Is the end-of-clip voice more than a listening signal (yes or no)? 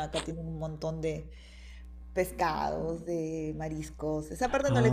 yes